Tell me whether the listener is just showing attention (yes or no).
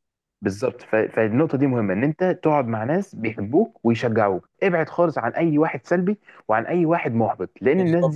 yes